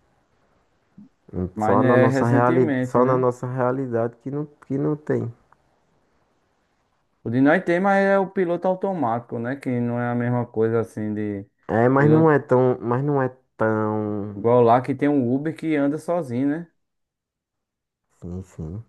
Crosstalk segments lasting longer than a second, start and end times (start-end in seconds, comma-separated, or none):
1.5-3.3